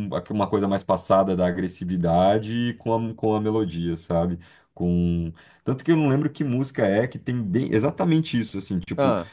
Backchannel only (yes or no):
yes